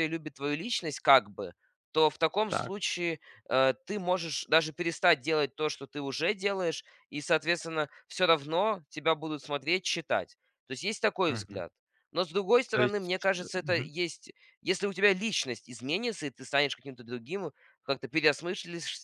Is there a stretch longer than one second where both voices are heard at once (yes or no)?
yes